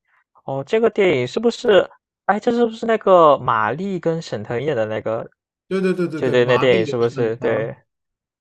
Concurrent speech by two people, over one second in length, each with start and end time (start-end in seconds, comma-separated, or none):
6.2-7.7